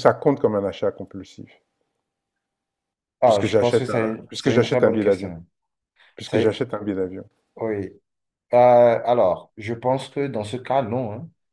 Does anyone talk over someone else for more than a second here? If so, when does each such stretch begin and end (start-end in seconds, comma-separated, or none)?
3.2-5.3